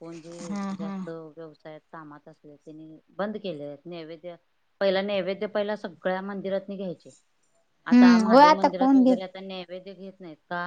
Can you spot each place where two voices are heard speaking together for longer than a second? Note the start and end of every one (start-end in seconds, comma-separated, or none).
7.9-9.2